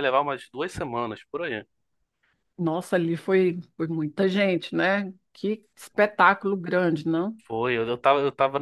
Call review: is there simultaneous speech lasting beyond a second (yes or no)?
no